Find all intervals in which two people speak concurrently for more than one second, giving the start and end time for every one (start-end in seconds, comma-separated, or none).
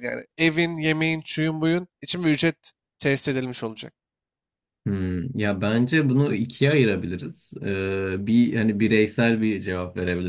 none